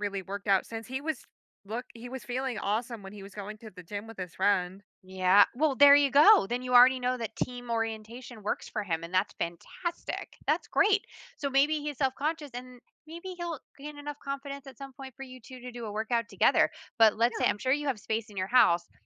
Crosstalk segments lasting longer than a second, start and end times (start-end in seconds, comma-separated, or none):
none